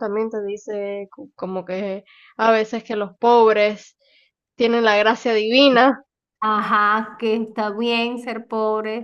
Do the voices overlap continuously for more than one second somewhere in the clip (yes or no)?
no